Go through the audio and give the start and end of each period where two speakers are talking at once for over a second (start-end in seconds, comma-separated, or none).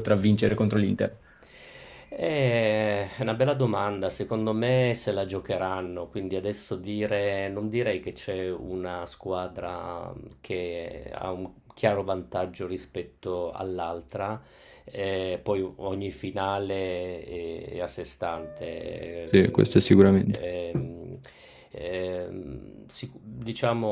19.2-20.5